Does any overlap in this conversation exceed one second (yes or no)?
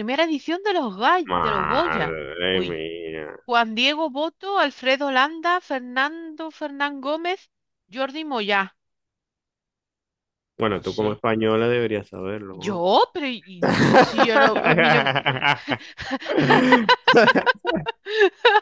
yes